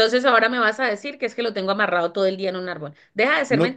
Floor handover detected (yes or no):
no